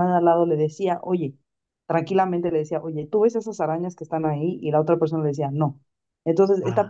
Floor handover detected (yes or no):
no